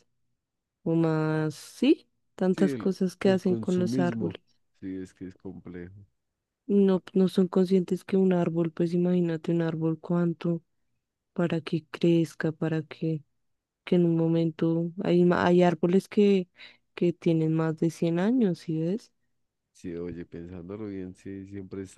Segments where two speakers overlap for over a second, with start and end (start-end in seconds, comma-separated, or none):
2.5-4.4